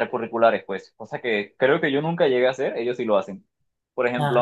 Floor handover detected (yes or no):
no